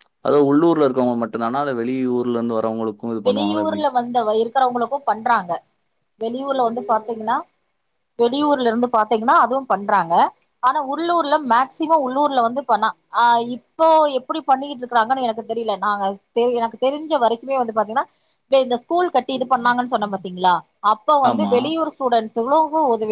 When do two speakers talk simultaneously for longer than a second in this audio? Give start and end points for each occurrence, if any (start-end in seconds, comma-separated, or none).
none